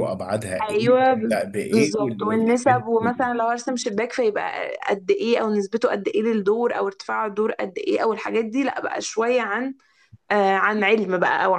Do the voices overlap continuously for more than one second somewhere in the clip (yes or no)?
yes